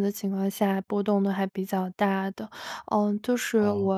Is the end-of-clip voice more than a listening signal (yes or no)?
no